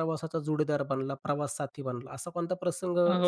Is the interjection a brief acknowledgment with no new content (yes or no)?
no